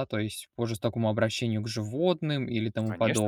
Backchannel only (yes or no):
no